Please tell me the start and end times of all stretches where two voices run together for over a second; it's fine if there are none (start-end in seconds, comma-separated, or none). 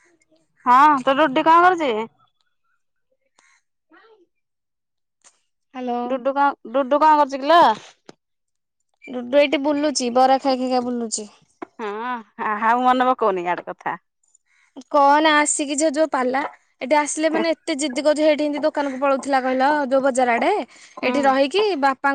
none